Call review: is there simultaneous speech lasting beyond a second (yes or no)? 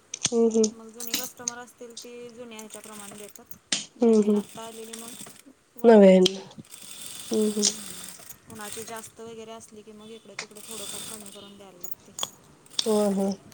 no